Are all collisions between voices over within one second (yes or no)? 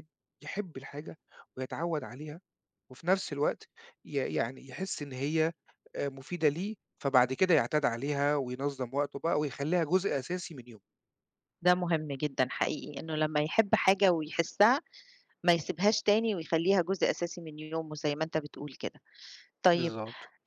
yes